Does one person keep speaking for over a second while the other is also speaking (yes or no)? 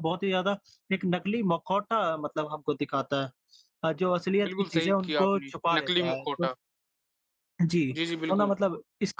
yes